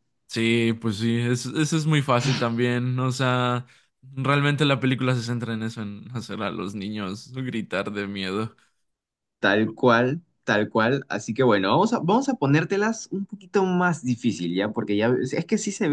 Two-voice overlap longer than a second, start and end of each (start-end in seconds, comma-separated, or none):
none